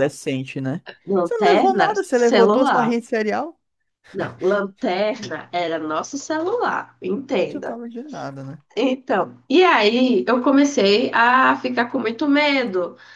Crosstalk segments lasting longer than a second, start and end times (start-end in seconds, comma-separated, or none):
1.2-3.0